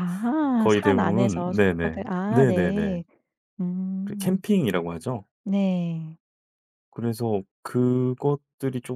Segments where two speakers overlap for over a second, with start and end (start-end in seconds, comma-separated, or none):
0.6-3.0